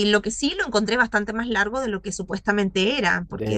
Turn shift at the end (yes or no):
no